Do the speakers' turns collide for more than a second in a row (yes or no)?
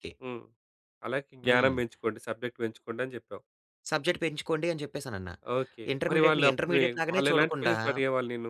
yes